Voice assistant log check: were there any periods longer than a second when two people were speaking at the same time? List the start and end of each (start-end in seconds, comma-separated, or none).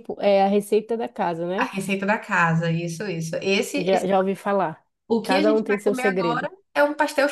5.2-6.5